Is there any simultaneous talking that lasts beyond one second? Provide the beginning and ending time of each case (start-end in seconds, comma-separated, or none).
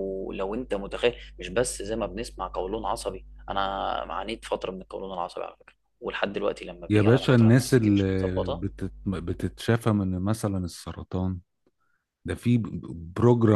6.9-8.6